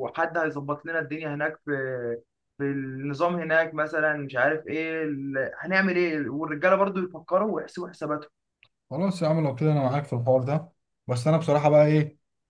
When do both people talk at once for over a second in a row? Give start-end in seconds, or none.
none